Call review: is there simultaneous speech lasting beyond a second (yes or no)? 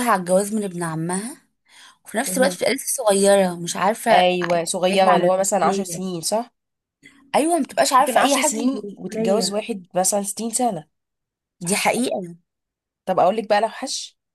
yes